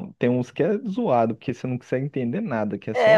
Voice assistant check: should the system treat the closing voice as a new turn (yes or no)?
yes